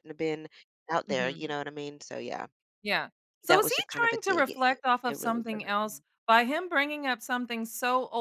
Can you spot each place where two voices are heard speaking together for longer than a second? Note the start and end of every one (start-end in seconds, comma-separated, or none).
3.5-6.0